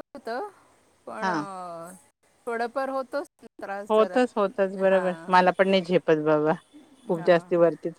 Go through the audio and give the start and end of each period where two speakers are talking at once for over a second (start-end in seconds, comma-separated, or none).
none